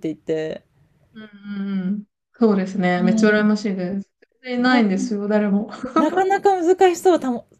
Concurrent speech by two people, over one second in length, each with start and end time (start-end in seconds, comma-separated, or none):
none